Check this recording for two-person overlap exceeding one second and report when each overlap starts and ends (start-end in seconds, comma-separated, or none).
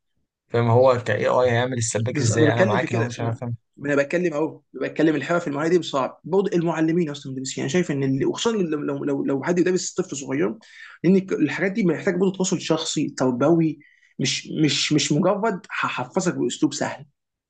2.1-3.4